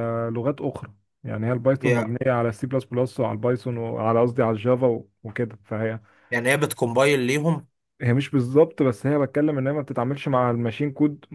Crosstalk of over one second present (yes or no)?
no